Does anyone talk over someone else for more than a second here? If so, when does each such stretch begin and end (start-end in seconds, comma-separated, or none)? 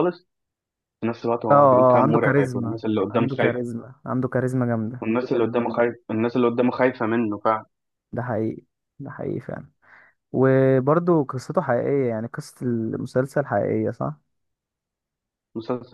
1.5-3.6